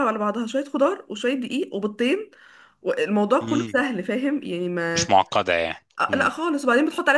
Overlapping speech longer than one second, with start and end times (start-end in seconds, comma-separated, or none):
none